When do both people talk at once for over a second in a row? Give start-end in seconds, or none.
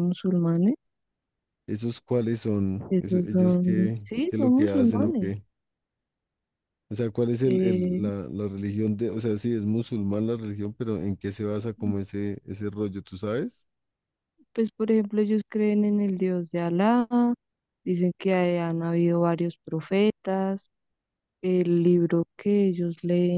2.9-5.3